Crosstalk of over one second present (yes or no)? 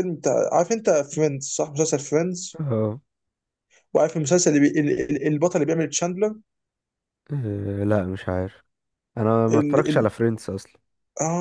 no